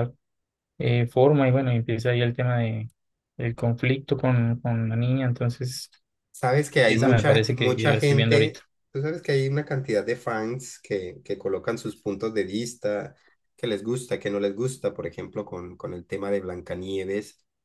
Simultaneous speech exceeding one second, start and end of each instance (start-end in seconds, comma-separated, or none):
6.9-8.6